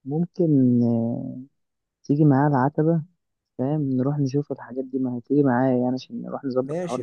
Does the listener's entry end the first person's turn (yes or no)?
yes